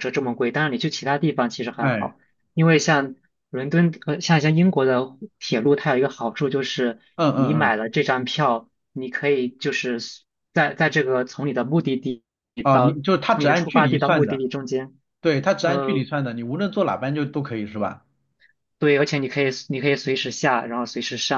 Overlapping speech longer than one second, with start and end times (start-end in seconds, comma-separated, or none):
12.7-14.4